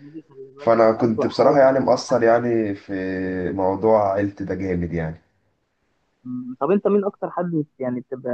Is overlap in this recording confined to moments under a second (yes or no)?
no